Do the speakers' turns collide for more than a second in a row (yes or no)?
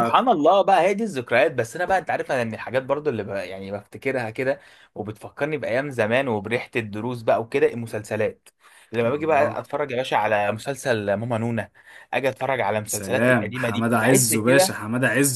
yes